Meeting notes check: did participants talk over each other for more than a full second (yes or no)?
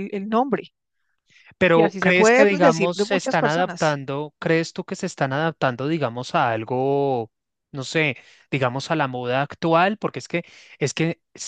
yes